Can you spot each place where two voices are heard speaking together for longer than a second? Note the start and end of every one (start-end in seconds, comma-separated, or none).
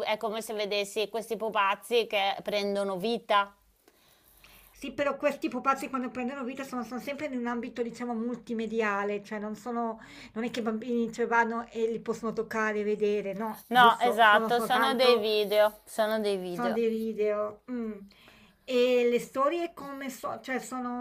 13.7-15.3